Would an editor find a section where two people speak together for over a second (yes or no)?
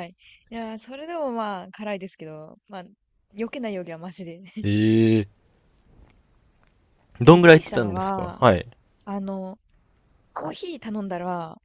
yes